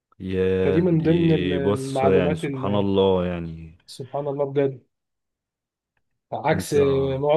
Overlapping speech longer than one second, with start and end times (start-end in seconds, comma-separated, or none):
0.6-2.9